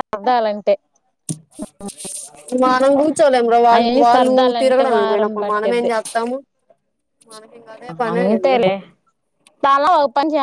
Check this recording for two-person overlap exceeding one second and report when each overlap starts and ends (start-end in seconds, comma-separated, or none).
3.8-5.9